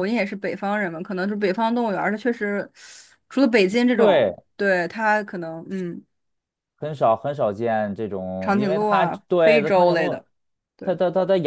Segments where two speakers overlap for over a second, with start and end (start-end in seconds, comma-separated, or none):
8.4-10.1